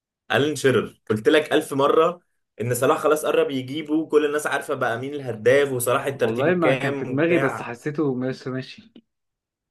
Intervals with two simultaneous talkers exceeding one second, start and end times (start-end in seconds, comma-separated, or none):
6.1-7.7